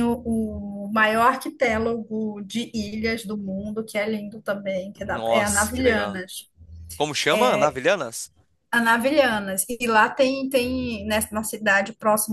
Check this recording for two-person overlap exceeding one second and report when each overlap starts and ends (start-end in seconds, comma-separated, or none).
5.0-6.2